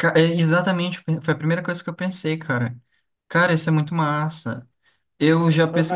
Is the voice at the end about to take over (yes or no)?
yes